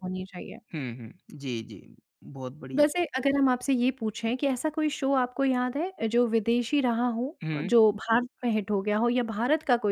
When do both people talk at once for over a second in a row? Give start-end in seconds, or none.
none